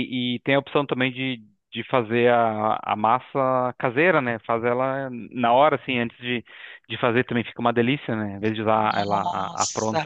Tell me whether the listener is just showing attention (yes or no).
no